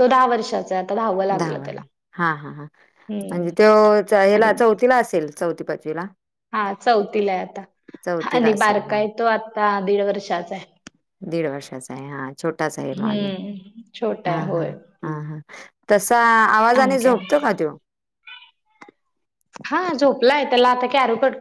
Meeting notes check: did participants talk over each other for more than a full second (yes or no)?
no